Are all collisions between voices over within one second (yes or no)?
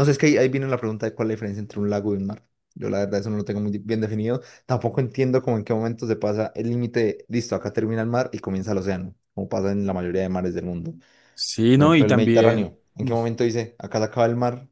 no